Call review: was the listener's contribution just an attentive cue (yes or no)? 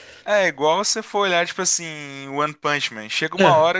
yes